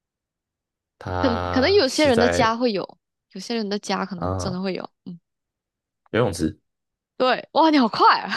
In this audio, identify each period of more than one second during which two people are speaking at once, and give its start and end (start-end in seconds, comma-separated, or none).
1.2-2.6